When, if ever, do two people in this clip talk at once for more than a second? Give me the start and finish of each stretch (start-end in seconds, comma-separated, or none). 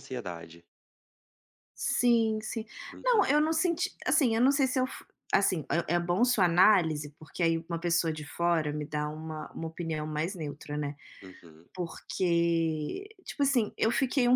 none